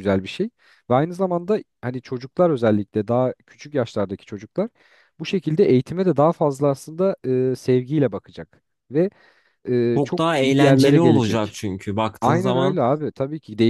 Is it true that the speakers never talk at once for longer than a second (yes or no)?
no